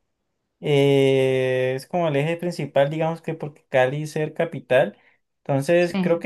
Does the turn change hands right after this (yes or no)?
no